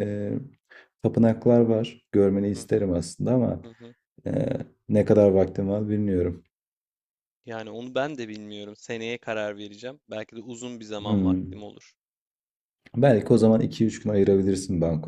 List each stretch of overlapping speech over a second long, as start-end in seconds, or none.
none